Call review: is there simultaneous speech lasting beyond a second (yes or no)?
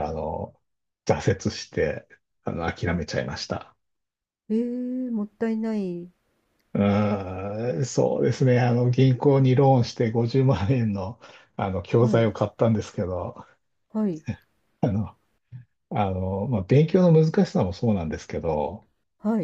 no